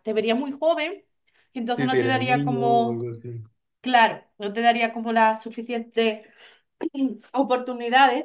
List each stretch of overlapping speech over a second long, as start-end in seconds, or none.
1.7-3.1